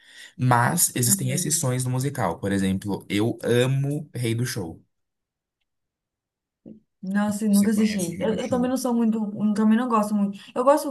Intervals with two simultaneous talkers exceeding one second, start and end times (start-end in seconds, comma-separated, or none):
7.5-8.7